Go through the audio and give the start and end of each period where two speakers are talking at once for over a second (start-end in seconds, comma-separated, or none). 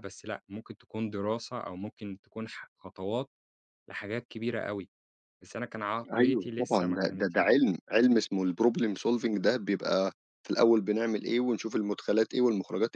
6.1-7.4